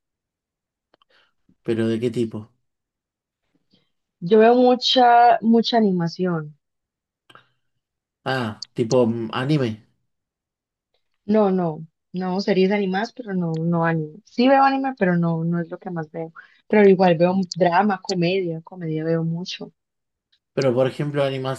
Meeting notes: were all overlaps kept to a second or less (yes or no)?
yes